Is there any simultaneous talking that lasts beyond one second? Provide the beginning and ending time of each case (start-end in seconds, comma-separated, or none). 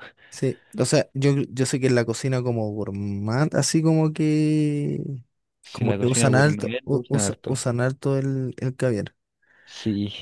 5.7-7.6